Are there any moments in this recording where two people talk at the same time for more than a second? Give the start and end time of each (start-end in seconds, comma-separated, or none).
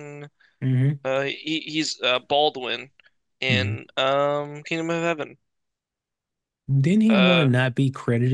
none